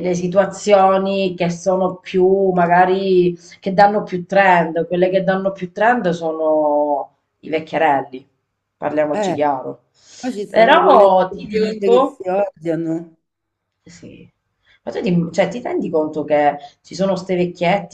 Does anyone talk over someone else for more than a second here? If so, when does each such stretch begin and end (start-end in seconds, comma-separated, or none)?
10.5-12.2